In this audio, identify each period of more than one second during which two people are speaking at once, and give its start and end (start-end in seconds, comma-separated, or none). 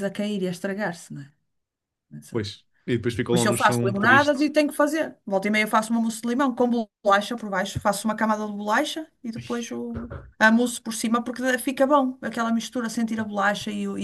3.3-4.5